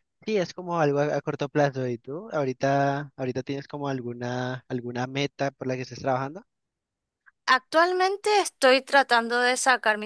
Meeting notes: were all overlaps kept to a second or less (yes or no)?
yes